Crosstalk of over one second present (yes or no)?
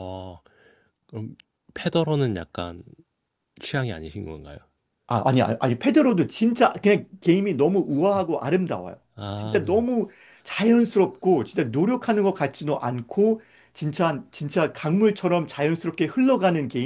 no